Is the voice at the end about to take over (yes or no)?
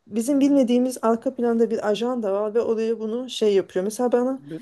no